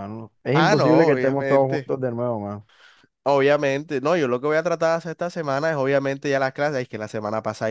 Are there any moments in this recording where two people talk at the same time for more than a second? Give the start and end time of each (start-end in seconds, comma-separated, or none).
0.5-1.9